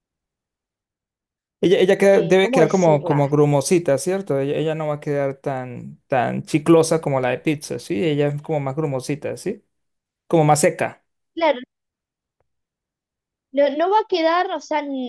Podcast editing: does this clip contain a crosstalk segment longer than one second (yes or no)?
yes